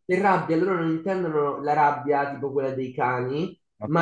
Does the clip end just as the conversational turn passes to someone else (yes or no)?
no